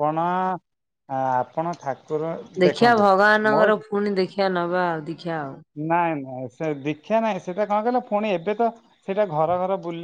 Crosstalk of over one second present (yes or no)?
no